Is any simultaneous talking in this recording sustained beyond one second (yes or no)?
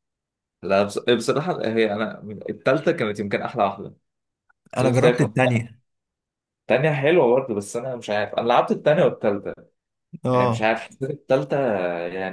no